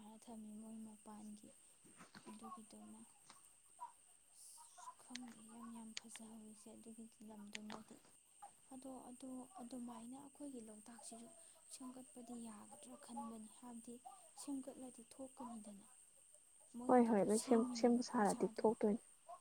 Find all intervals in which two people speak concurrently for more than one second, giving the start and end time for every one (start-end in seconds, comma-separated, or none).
16.9-18.6